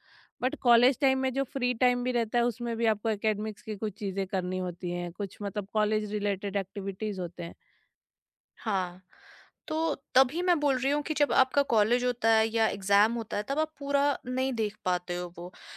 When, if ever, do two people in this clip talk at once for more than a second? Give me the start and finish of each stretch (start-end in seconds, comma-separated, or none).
none